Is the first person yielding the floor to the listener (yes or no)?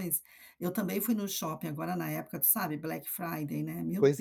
yes